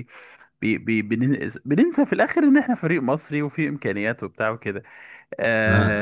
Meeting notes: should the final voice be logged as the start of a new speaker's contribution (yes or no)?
no